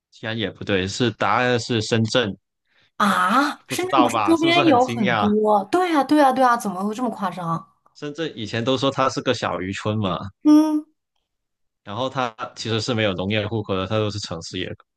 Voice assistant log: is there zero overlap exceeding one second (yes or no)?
no